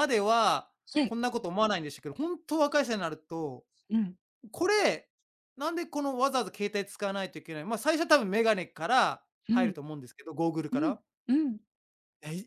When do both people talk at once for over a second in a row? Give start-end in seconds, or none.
none